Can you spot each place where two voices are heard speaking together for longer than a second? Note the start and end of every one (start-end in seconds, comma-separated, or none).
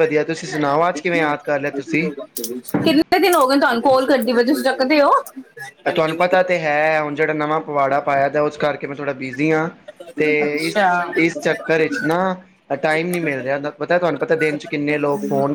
none